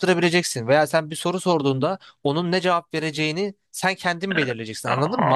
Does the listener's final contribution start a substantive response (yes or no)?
yes